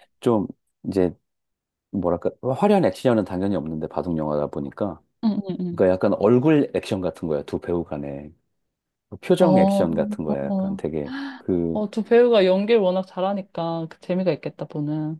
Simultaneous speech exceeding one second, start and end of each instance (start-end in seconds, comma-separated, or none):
9.4-10.8